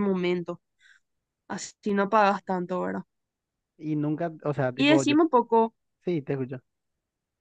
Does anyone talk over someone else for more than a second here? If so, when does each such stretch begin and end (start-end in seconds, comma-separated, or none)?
none